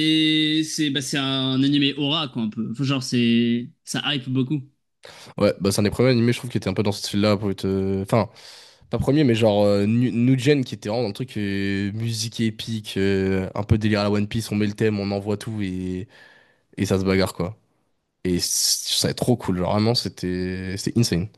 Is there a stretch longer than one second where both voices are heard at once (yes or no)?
no